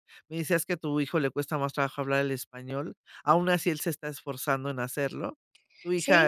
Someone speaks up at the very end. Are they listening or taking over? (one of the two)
taking over